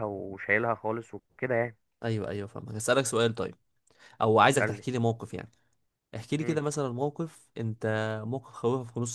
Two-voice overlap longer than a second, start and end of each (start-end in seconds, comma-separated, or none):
none